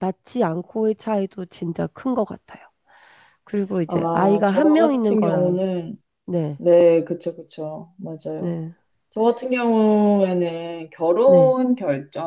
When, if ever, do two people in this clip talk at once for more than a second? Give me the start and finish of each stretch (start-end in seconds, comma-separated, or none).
3.9-5.6